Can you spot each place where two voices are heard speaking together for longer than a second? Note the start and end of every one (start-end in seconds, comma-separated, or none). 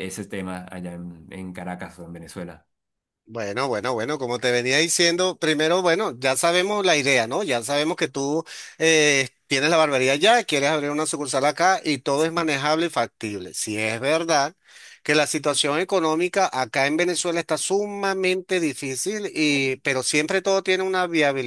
none